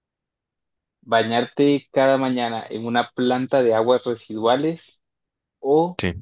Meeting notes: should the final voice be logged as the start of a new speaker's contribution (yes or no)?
no